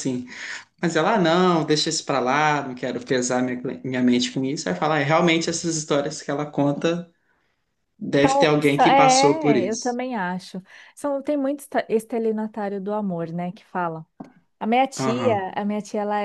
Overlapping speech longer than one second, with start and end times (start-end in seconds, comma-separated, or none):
8.6-10.0